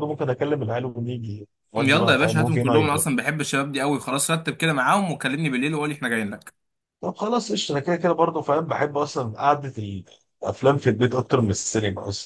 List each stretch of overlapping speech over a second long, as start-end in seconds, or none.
1.8-3.1